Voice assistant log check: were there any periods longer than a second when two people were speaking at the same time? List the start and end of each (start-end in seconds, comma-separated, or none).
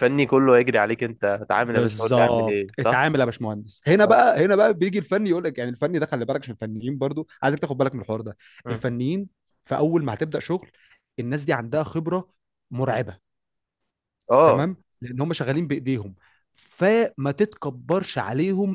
1.6-3.1